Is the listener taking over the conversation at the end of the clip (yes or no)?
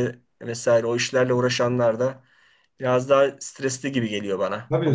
yes